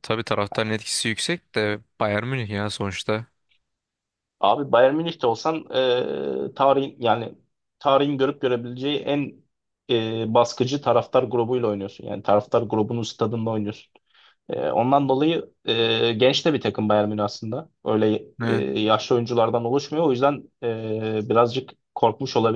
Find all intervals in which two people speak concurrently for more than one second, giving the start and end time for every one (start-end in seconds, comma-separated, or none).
none